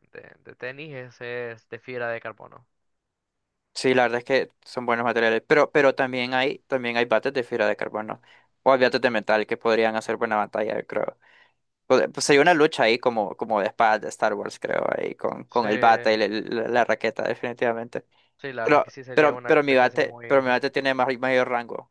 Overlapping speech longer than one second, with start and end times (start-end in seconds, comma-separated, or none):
18.6-20.6